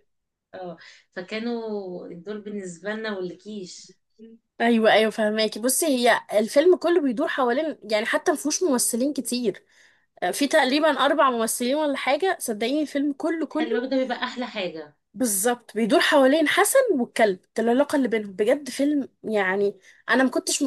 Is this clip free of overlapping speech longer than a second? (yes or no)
yes